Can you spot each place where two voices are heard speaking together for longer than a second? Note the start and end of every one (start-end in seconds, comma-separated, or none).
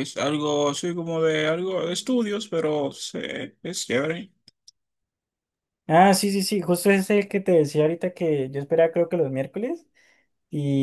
none